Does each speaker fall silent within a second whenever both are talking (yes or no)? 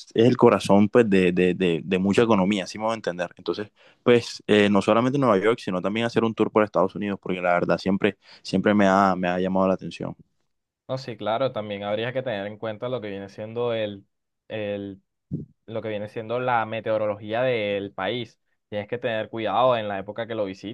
yes